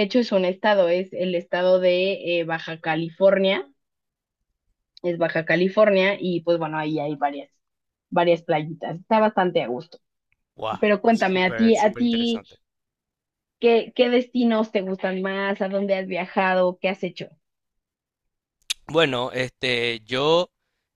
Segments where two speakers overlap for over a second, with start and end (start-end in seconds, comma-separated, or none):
10.8-12.4